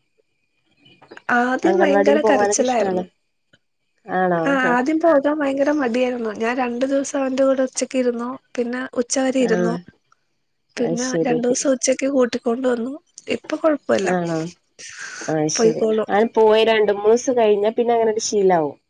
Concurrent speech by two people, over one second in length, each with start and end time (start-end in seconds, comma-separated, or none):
1.7-3.0